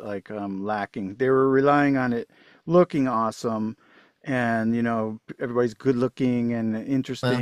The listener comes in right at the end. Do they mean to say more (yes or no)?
no